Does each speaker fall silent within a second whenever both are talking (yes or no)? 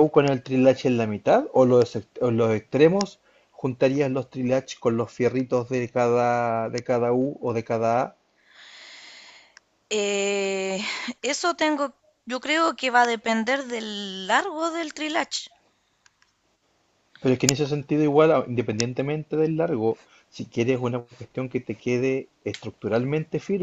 yes